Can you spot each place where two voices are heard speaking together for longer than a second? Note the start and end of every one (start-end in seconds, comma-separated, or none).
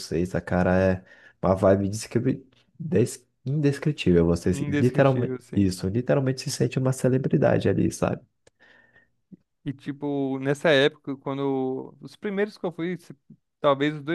4.5-5.7